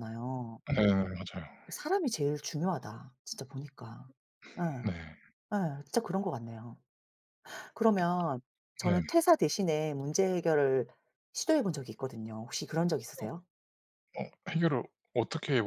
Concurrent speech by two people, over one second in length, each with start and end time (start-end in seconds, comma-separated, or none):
none